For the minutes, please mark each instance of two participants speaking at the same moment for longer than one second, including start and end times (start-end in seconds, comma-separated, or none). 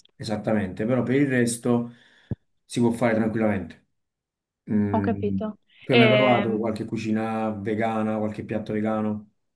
4.9-6.7